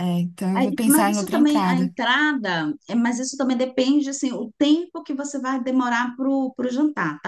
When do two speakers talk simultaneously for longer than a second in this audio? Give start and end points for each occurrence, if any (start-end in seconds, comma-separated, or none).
0.5-1.9